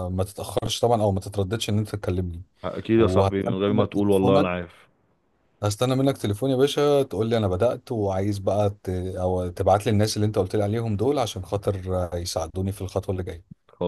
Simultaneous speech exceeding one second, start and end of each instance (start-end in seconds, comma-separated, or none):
3.0-4.5